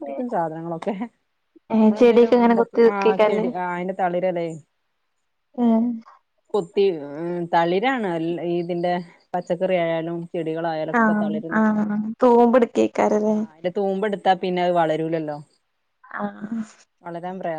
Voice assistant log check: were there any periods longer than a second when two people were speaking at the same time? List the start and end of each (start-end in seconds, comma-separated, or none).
1.8-3.5